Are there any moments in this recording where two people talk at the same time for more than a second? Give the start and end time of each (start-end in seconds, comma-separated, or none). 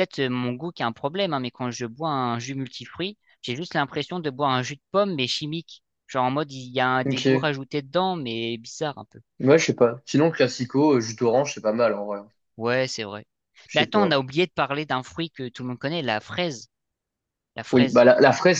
none